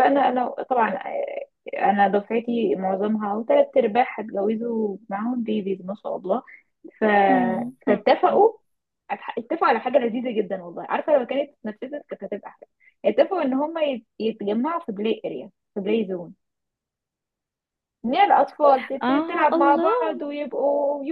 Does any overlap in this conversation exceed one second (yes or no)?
yes